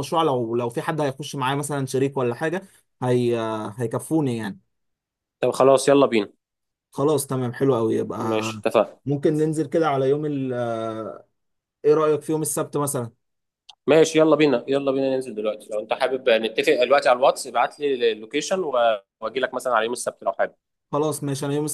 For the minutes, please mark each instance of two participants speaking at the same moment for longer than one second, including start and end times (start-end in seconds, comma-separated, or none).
none